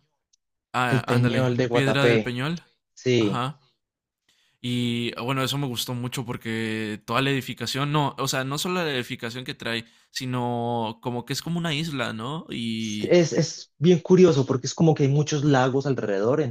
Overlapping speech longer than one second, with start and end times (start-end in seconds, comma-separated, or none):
0.9-2.4